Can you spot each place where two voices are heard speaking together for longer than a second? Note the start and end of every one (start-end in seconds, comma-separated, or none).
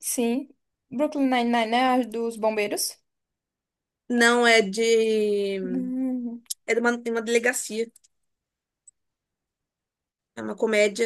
none